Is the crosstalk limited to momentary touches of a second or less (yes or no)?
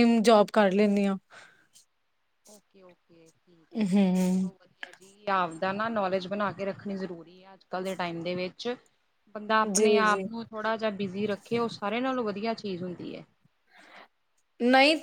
yes